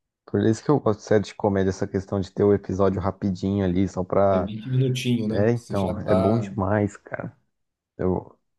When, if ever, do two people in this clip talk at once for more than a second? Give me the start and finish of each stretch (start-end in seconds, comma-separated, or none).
5.3-6.5